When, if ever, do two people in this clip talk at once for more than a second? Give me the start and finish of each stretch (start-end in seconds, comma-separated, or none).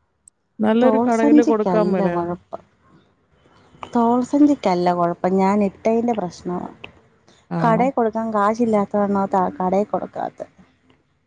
0.8-2.4